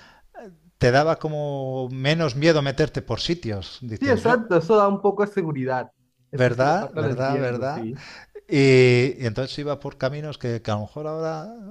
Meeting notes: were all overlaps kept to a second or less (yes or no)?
no